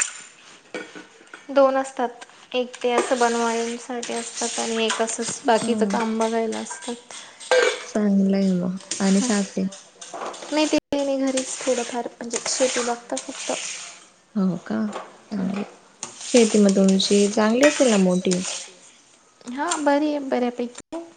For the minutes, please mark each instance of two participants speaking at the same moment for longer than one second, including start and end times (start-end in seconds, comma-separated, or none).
none